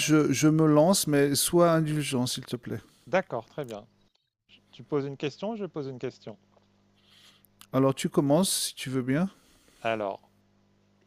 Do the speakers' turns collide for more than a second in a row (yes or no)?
no